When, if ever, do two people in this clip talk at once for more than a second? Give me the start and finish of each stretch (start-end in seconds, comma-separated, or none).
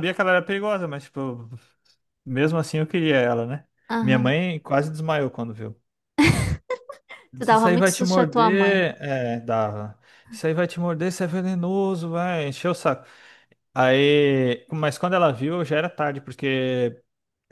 7.4-8.8